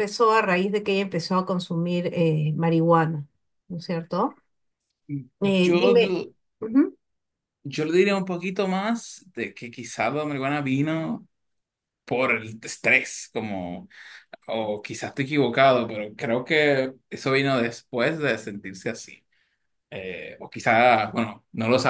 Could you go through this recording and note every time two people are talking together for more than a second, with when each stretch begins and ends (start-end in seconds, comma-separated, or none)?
none